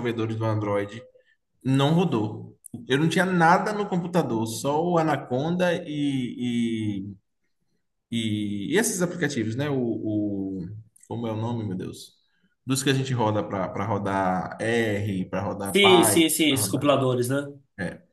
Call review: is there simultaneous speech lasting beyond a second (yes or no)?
yes